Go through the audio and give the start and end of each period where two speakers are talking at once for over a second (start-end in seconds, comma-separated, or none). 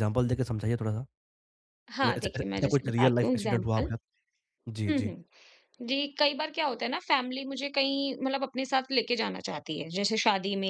2.0-3.9